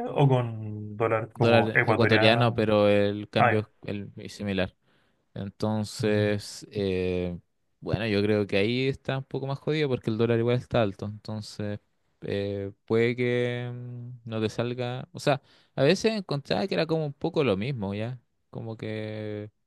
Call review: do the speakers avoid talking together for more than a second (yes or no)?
no